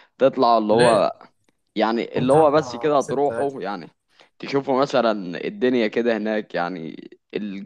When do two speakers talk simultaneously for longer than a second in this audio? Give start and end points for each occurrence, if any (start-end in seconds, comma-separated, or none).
2.1-3.5